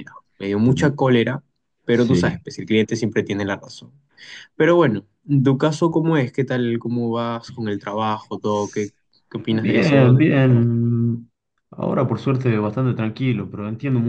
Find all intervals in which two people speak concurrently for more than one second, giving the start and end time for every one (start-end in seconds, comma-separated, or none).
9.5-10.7